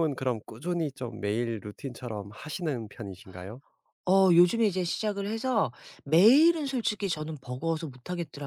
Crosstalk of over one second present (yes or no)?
no